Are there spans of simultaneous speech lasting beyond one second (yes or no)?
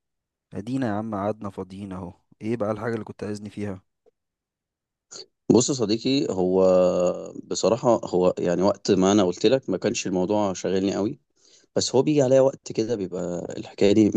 no